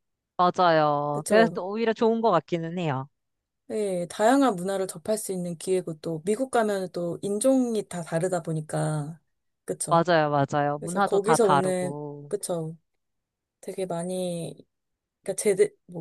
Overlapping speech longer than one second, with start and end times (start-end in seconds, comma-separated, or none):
10.8-12.3